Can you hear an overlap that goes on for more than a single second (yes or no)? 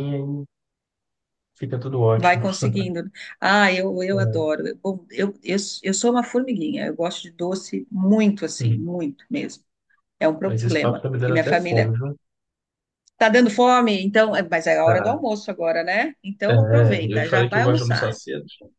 yes